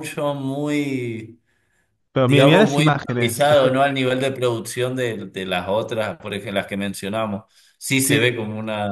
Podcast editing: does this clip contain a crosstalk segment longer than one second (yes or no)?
yes